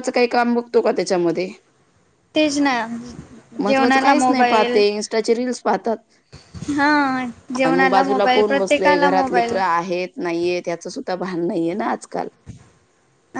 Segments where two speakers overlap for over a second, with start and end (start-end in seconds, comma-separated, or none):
7.7-9.5